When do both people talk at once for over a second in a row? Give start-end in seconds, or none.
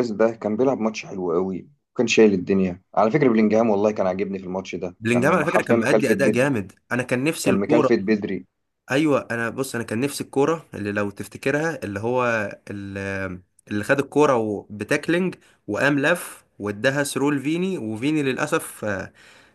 5.0-6.5